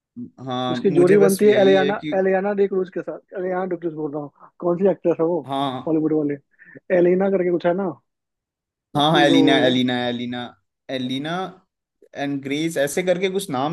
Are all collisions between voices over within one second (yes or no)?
no